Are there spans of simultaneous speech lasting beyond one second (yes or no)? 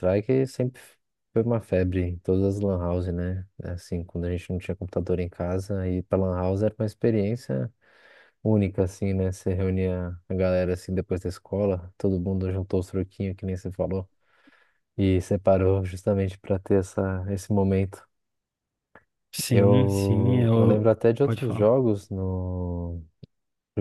yes